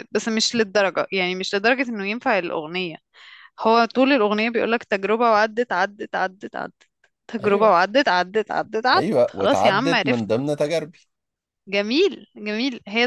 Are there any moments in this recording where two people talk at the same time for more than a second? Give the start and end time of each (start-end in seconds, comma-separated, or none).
8.9-10.3